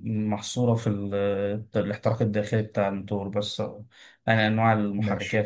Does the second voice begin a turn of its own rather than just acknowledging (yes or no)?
no